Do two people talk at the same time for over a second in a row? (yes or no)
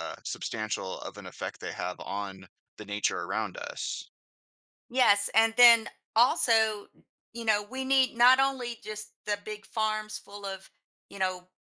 no